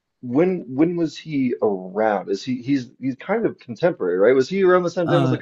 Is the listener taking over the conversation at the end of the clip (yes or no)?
no